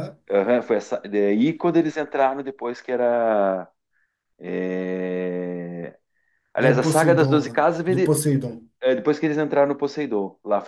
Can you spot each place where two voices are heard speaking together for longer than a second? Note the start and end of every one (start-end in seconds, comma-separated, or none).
6.6-8.3